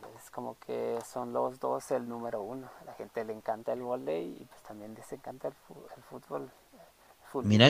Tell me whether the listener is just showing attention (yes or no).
no